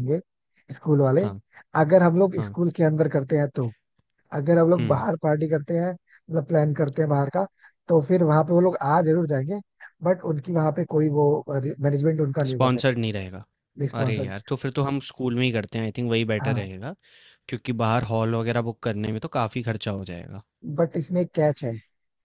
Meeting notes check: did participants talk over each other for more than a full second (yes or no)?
no